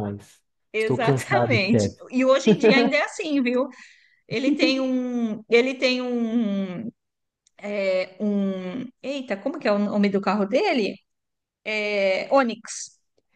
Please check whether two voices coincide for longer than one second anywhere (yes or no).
yes